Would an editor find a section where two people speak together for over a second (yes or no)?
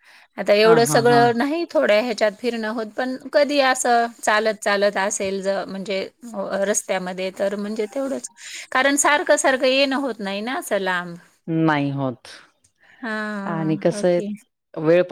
no